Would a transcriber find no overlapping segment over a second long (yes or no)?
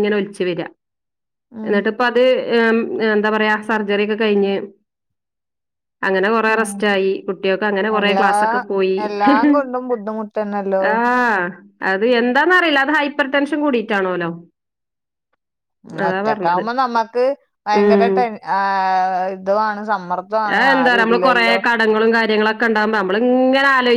yes